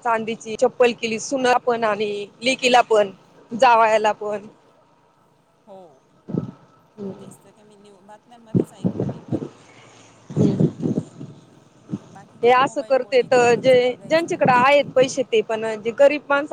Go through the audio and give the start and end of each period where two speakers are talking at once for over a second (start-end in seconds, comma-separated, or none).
12.4-14.7